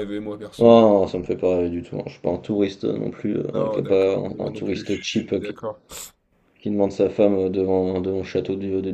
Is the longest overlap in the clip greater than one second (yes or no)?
yes